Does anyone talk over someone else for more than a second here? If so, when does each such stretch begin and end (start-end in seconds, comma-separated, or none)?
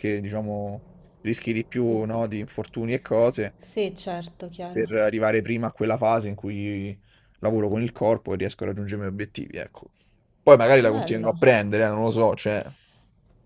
none